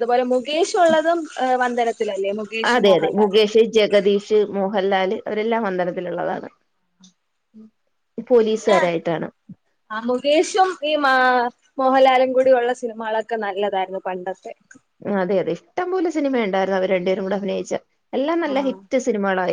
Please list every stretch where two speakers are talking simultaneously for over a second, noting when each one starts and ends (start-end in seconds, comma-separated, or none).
none